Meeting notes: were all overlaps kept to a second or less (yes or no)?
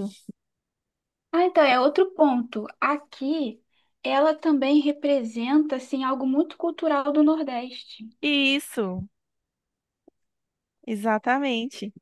yes